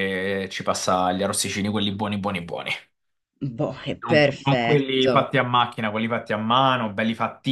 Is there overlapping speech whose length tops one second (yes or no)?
yes